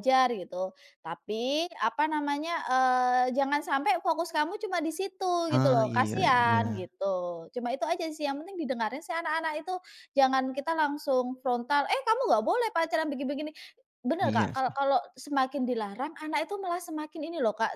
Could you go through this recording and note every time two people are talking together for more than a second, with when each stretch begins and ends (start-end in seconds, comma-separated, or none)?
5.5-6.9